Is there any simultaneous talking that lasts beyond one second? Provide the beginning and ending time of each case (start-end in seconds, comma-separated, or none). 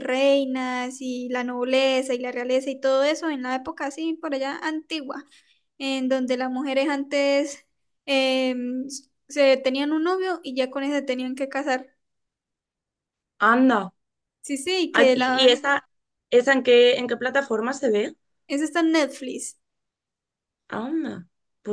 none